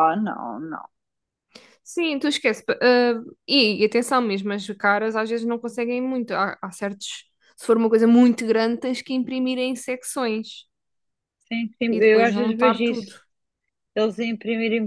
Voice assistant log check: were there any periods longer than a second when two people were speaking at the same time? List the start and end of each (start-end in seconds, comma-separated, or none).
11.9-13.1